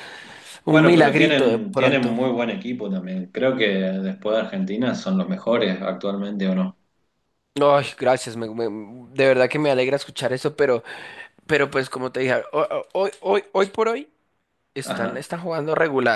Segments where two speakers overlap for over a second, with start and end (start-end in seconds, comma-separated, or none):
0.7-2.2